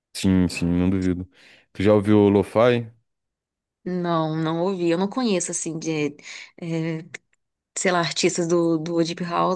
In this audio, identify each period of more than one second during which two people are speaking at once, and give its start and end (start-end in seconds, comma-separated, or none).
none